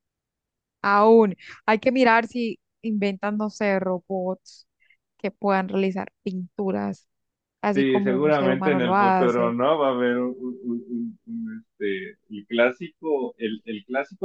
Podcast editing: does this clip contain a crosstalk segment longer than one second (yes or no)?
yes